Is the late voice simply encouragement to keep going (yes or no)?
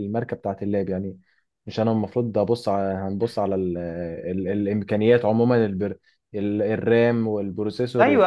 no